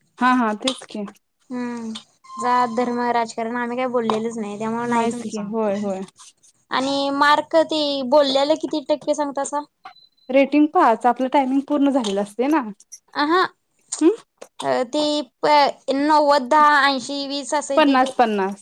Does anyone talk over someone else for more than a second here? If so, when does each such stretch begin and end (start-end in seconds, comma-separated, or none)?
none